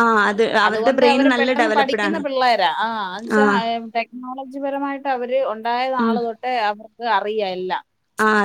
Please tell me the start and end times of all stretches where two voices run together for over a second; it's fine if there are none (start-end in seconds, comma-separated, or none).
0.7-2.2